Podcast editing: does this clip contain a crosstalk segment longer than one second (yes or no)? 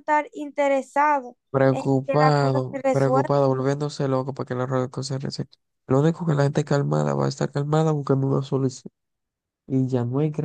yes